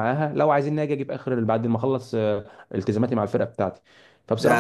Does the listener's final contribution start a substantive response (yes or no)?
yes